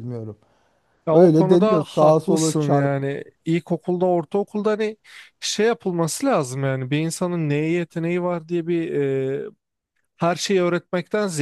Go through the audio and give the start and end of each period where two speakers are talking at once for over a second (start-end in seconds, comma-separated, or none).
1.1-2.9